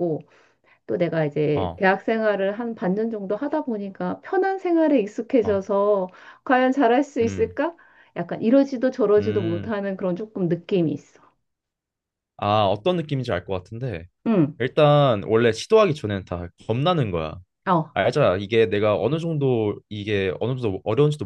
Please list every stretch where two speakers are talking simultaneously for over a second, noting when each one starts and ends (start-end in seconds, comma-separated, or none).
none